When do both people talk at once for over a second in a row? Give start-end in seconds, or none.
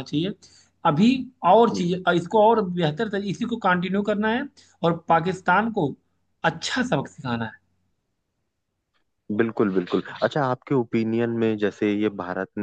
none